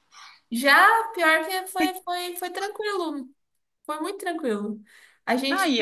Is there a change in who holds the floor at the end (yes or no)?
no